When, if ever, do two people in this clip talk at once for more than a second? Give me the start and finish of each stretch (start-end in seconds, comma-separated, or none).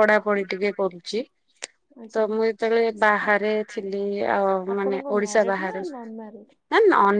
4.8-6.5